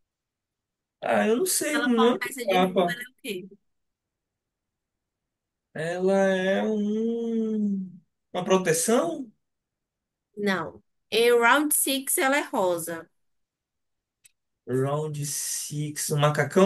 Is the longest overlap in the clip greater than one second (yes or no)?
yes